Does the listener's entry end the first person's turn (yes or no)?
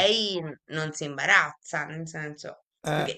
no